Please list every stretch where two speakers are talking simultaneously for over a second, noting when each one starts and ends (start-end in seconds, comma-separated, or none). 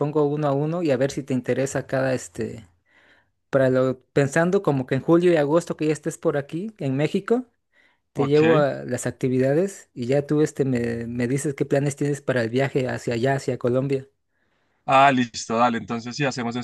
none